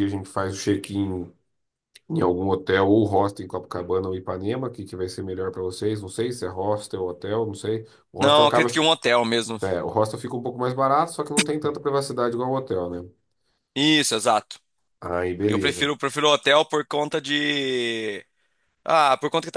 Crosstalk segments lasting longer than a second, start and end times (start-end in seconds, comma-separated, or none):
none